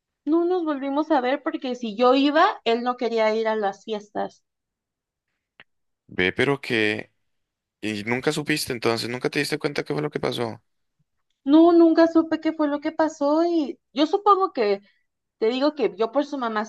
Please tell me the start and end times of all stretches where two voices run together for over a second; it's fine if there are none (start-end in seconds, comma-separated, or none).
none